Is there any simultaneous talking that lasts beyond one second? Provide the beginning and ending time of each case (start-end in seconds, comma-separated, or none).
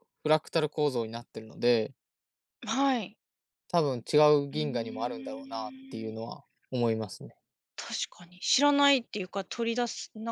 4.5-6.3